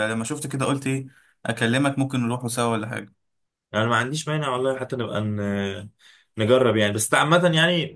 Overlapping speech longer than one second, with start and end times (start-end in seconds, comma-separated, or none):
none